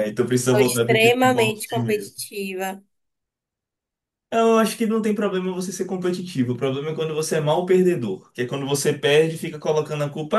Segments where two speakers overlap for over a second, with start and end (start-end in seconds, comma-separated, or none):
0.5-2.2